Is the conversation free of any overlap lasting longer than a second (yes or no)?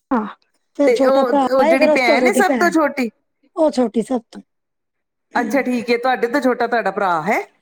no